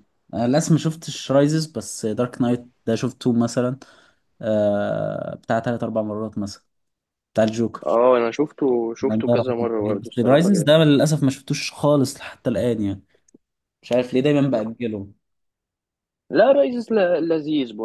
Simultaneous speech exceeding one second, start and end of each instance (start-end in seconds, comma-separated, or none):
9.0-10.7